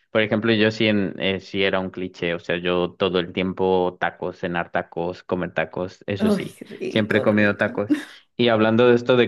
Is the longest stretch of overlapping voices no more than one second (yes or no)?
no